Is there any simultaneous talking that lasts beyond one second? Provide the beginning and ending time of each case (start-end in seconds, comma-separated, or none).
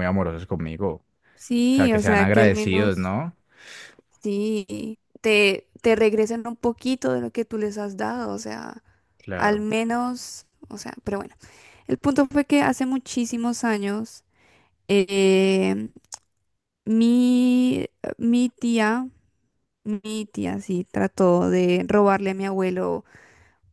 1.8-3.1